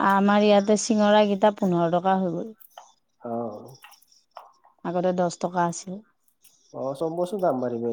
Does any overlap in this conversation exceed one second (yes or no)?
no